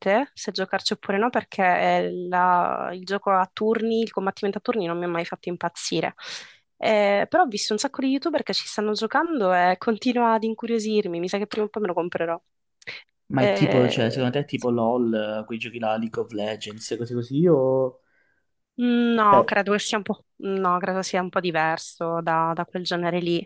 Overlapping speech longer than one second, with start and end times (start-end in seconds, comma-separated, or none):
13.3-14.7